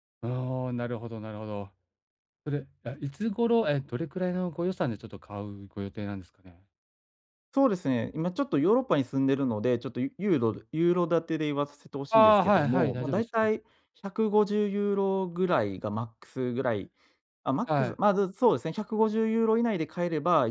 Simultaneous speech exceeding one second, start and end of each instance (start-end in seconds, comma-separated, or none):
12.1-13.5